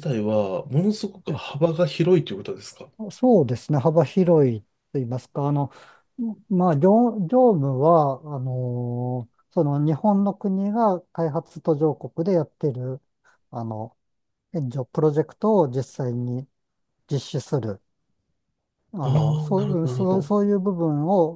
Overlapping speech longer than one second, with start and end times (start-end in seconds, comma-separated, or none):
19.0-20.5